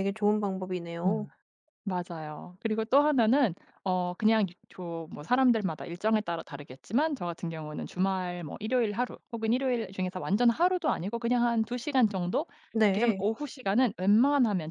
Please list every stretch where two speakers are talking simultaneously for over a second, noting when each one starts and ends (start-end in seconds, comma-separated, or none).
none